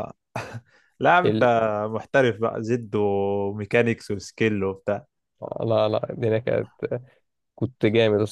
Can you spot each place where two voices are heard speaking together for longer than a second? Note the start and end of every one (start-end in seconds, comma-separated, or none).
none